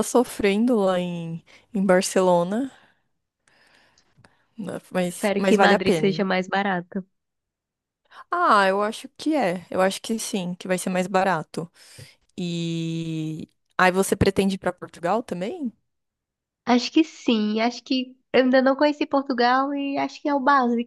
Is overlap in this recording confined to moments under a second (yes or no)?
no